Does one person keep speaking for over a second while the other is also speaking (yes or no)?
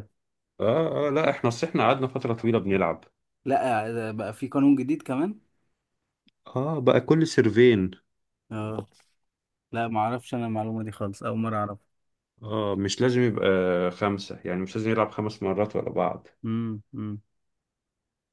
no